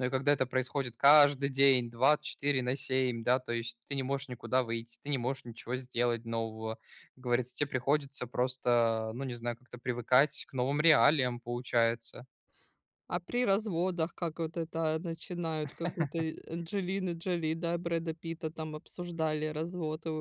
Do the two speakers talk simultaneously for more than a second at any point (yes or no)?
no